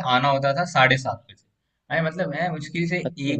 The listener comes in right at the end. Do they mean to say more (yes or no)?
no